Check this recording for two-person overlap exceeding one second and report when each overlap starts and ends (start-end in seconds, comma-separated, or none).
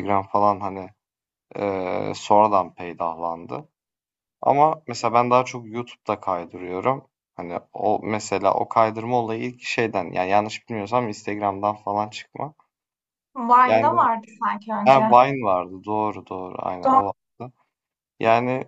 none